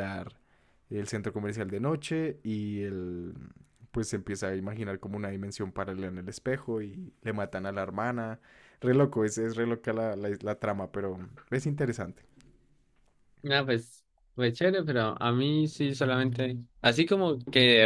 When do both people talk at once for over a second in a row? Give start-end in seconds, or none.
none